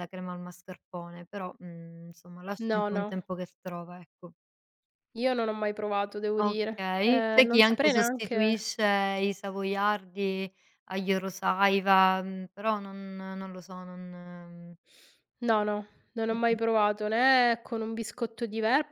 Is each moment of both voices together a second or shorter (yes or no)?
no